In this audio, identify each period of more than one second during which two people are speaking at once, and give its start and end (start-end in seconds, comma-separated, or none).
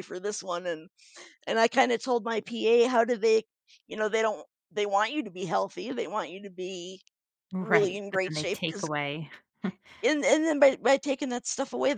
7.6-8.9